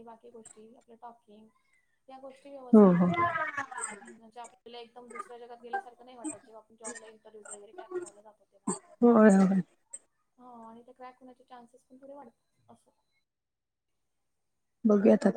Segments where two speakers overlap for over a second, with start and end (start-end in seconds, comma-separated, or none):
none